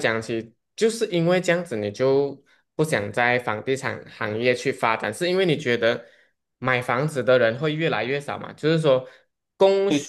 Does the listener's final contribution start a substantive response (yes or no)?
no